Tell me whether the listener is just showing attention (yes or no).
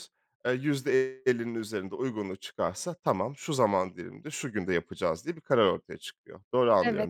no